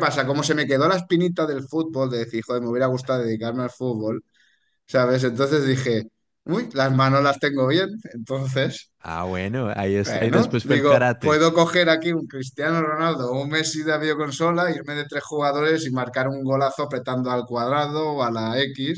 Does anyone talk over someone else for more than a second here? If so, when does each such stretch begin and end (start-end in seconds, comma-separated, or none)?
10.0-11.4